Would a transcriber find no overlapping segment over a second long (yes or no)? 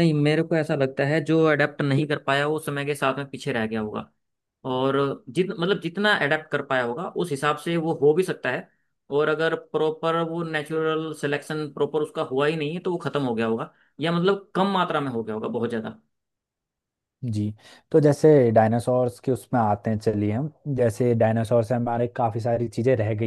yes